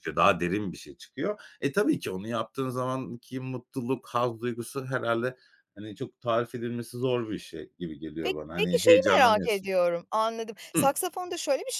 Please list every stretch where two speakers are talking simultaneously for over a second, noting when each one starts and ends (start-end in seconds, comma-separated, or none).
8.2-9.7